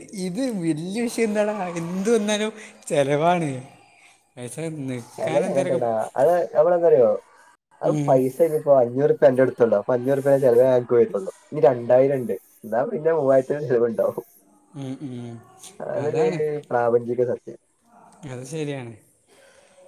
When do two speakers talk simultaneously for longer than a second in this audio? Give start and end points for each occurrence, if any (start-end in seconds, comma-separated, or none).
none